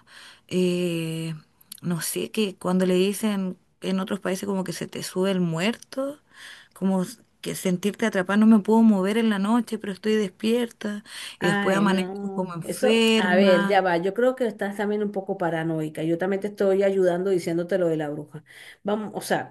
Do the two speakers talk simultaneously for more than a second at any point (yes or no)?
yes